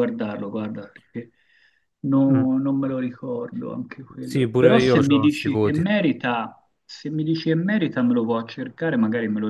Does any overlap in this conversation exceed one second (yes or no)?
yes